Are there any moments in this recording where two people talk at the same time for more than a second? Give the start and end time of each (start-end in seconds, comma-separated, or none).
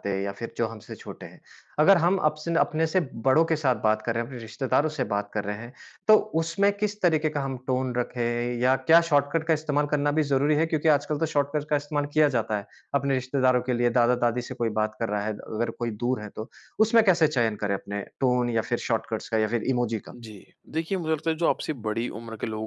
none